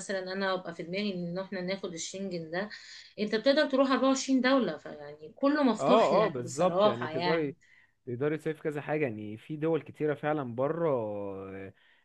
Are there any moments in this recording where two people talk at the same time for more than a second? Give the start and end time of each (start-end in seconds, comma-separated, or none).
5.8-7.5